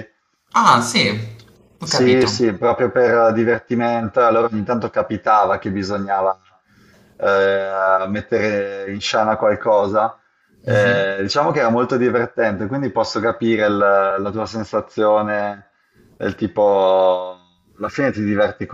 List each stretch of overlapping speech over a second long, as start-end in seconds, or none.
none